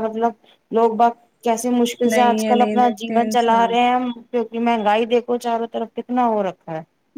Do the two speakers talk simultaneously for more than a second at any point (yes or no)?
yes